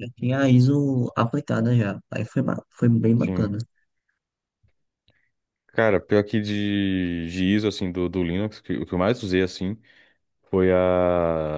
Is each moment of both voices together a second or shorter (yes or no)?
yes